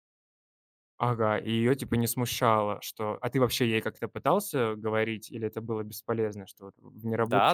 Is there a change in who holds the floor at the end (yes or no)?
yes